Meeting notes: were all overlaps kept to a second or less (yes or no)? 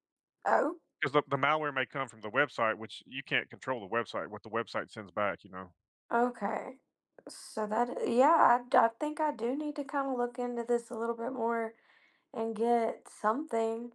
yes